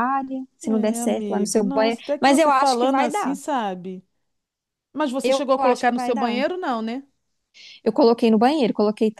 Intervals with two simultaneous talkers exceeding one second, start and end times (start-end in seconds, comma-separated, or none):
0.6-3.4, 5.2-6.4